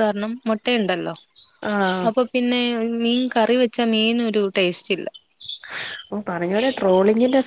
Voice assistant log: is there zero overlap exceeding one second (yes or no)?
yes